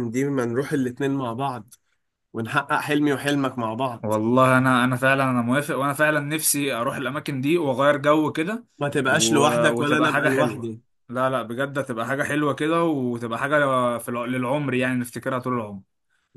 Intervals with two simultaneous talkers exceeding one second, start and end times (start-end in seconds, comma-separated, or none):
9.1-10.7